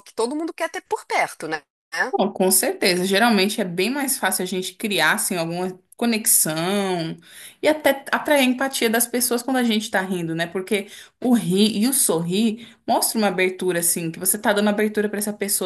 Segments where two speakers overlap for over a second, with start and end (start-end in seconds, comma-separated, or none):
none